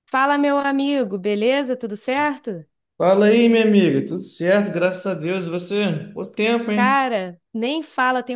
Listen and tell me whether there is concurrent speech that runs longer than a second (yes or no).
no